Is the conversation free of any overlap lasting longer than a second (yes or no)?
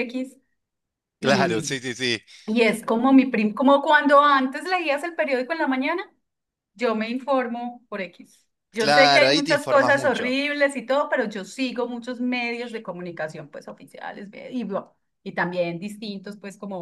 no